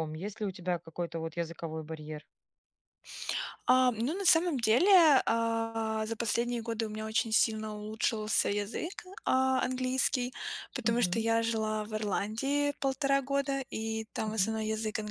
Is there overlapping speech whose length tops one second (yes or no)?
no